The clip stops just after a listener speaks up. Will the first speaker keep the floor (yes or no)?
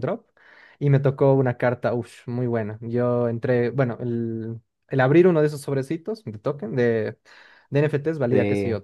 yes